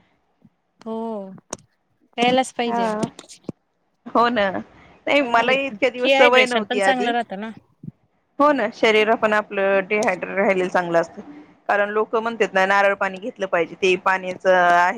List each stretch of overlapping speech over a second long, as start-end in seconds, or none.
5.1-7.1